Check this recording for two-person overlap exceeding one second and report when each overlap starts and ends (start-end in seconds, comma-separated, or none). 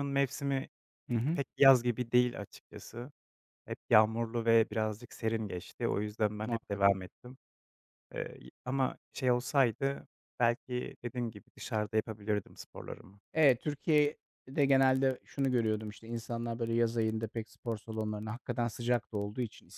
none